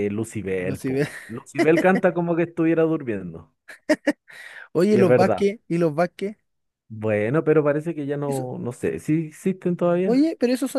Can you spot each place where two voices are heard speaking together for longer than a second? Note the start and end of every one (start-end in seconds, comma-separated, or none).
none